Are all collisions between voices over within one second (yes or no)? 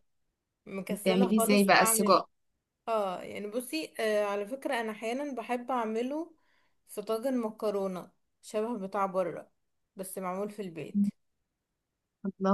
no